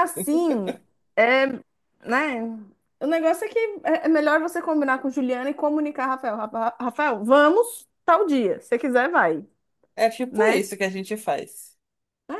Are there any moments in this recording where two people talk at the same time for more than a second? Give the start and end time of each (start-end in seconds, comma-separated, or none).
none